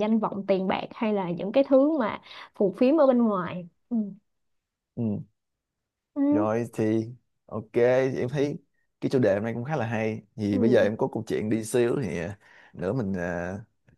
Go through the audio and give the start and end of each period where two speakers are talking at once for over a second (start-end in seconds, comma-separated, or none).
none